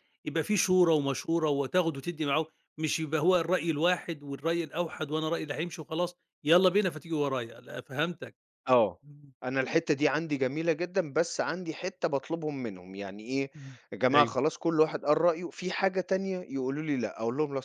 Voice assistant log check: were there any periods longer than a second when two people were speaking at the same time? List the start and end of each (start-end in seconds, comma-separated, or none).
none